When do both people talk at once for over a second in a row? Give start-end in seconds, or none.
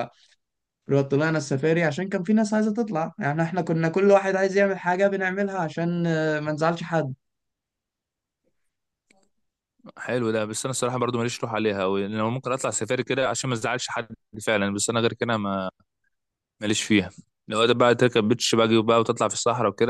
none